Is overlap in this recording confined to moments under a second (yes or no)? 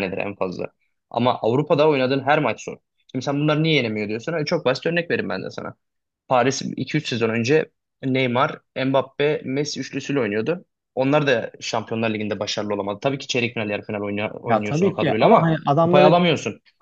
no